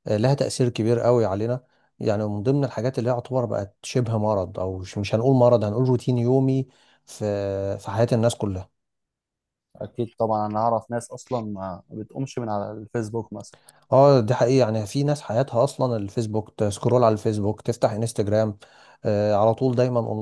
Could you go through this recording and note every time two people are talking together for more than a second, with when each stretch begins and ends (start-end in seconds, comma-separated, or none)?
none